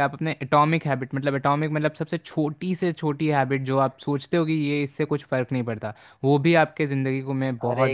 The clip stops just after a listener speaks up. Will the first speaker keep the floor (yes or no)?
no